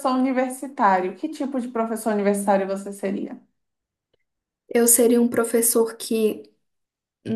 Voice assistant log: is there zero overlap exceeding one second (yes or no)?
yes